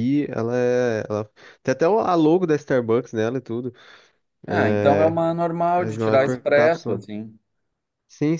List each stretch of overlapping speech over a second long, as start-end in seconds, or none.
5.8-7.0